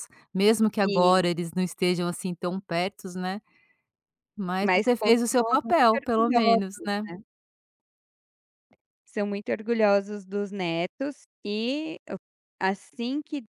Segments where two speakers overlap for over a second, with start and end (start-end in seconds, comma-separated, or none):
4.6-7.0